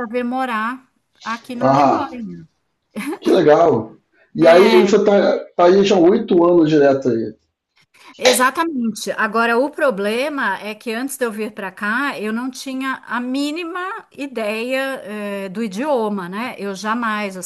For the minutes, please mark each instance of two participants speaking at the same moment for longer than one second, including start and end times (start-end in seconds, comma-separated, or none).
none